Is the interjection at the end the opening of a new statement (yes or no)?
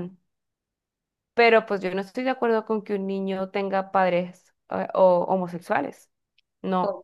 yes